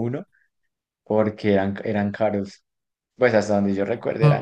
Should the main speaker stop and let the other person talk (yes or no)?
yes